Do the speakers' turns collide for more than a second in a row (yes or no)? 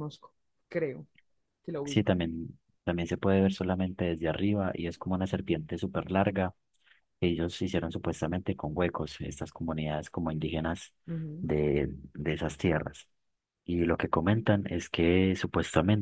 no